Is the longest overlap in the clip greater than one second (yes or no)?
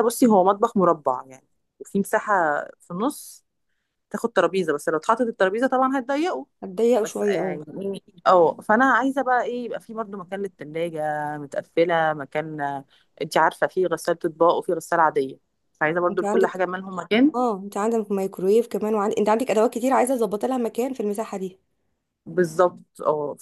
no